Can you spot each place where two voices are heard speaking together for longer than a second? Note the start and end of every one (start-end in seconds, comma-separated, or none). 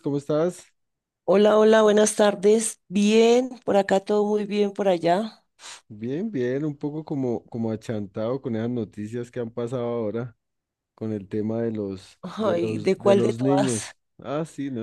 12.2-13.9